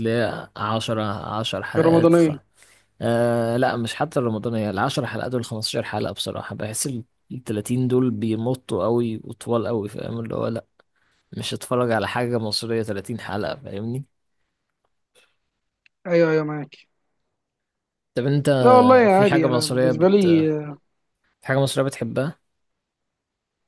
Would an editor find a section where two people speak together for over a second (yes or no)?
yes